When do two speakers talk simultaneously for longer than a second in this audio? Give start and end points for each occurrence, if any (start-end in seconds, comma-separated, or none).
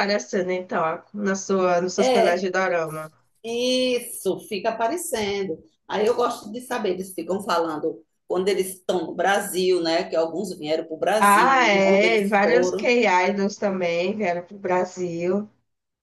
11.2-12.9